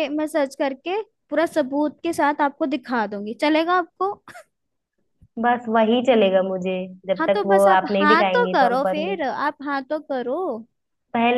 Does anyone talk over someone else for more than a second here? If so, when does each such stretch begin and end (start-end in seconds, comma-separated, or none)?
7.2-9.0